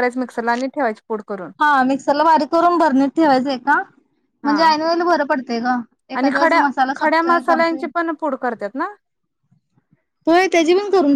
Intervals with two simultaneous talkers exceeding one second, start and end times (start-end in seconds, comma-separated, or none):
6.1-7.8